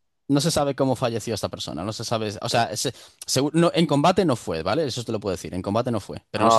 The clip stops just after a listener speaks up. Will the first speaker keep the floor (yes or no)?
no